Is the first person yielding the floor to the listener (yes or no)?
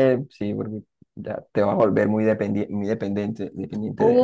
yes